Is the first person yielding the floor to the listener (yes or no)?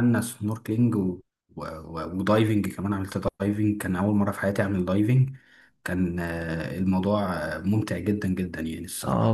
yes